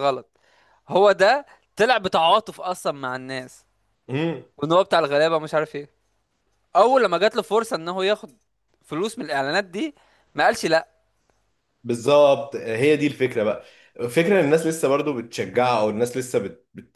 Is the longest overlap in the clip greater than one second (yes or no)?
no